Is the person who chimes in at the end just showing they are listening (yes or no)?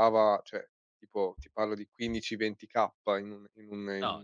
yes